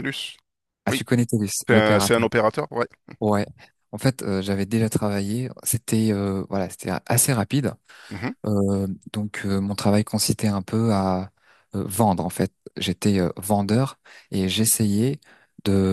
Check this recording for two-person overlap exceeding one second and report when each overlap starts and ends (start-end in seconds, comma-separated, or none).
none